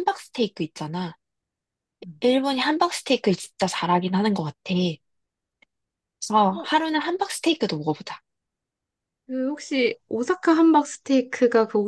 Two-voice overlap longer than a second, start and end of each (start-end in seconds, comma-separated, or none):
none